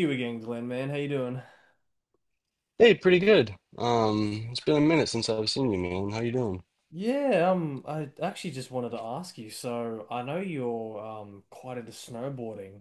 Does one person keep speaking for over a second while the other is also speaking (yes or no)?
no